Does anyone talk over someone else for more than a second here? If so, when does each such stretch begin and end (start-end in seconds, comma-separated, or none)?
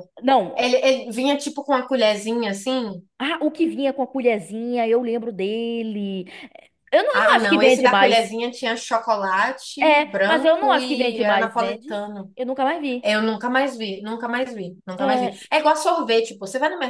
7.1-8.3, 9.8-11.9